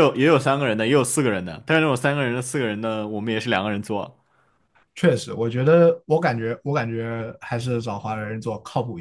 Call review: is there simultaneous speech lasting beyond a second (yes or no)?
no